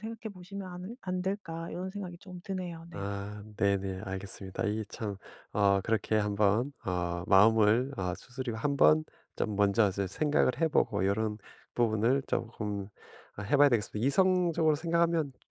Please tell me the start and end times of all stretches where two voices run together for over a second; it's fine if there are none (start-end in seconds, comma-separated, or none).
none